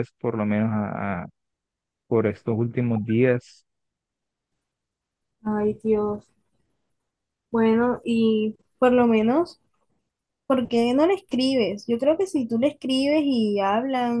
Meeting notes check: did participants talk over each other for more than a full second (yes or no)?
no